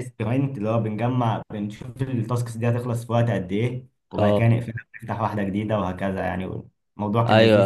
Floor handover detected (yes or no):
yes